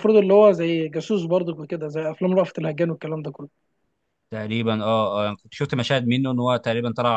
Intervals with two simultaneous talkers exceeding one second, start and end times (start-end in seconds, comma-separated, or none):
none